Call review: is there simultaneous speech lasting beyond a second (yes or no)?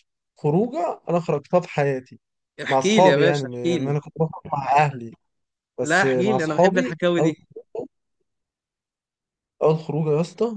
yes